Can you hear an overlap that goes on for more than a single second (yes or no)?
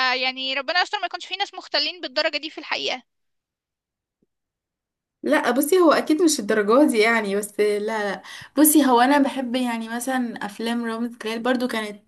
no